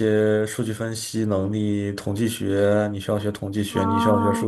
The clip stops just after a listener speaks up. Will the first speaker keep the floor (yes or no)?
yes